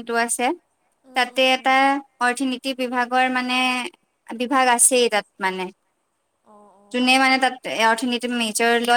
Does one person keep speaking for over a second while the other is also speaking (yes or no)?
no